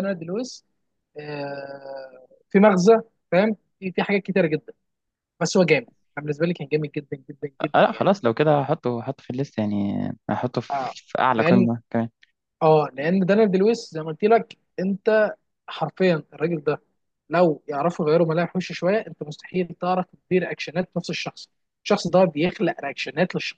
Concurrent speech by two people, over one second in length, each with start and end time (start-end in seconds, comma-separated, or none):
none